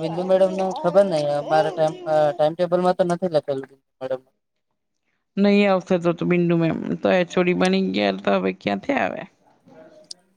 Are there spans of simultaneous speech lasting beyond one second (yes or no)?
no